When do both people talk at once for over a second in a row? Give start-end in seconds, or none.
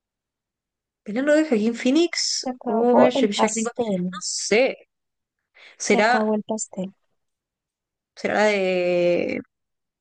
2.4-4.1